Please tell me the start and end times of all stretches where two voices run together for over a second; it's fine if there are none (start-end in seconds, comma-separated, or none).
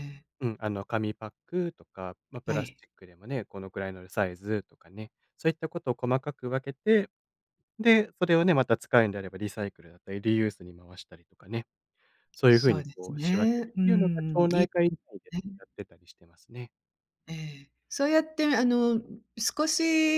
12.5-14.7